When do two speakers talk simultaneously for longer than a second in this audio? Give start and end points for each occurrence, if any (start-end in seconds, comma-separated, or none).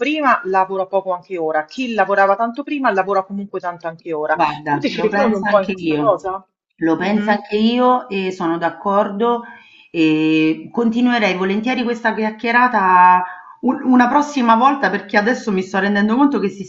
4.3-6.2